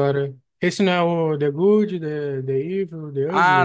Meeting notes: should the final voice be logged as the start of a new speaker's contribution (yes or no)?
yes